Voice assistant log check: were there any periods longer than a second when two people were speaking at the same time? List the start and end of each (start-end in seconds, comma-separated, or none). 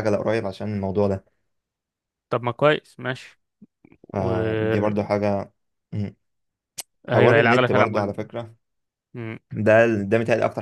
7.1-8.3